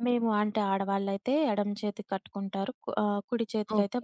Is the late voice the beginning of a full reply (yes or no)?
yes